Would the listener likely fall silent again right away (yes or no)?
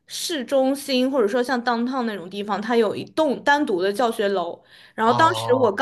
yes